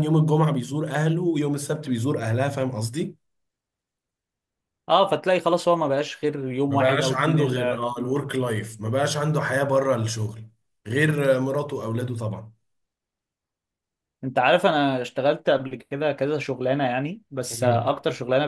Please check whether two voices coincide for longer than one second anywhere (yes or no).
yes